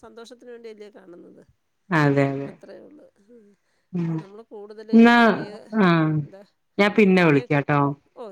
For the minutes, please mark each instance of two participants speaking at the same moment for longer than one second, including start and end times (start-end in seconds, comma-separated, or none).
none